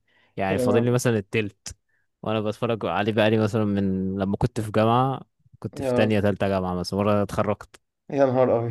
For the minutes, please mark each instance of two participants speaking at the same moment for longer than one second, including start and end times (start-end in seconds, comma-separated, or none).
none